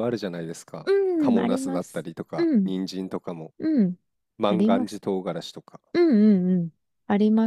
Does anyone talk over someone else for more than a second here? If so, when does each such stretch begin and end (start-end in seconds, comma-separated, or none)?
0.8-2.7